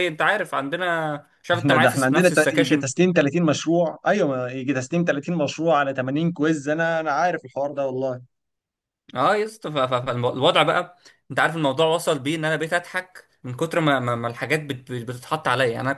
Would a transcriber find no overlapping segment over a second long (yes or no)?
no